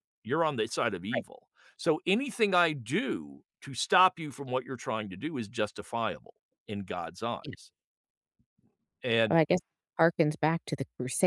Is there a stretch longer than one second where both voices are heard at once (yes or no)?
no